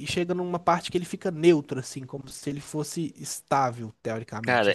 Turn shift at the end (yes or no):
yes